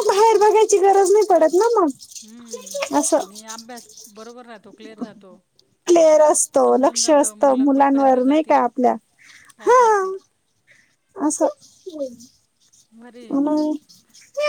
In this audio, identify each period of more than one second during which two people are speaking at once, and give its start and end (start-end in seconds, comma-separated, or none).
6.6-8.6